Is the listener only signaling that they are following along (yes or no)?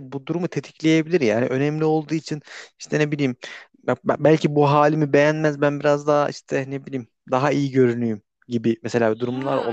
no